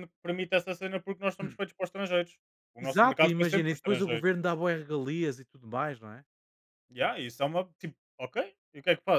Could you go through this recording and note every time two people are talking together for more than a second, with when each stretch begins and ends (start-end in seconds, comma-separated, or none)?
2.8-4.3